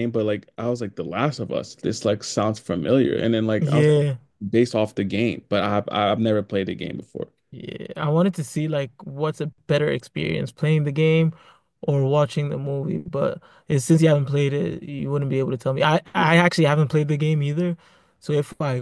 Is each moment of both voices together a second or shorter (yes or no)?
yes